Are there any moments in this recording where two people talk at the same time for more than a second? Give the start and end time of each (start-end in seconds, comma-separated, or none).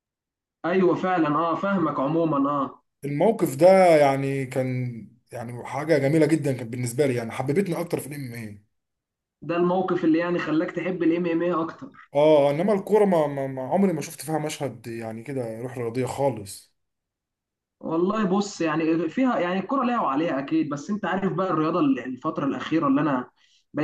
none